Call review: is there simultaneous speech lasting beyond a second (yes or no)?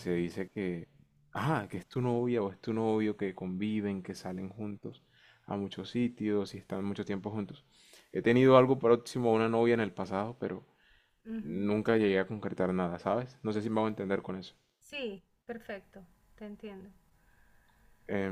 no